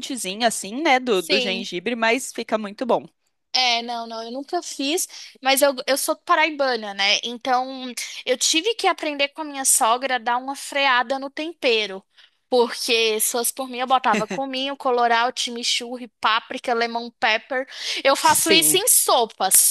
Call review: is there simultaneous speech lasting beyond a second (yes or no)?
no